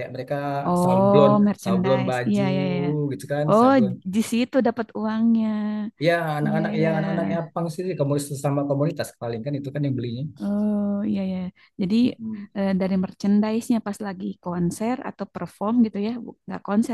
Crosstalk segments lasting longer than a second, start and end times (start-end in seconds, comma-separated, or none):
0.8-2.4